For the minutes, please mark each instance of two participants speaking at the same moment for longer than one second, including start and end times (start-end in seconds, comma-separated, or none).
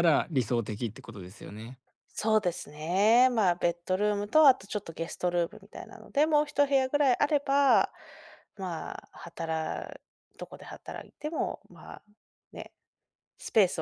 none